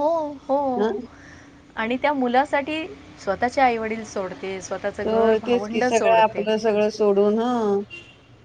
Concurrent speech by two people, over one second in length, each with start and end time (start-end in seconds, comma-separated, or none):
5.1-6.5